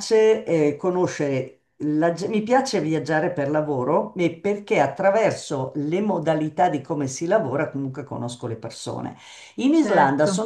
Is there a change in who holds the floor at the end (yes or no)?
no